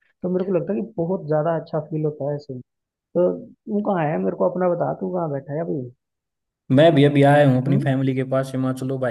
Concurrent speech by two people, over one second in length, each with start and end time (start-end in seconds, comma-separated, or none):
none